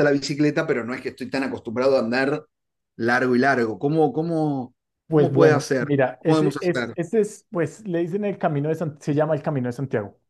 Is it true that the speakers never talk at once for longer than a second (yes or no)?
no